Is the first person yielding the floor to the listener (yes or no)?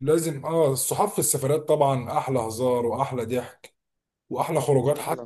no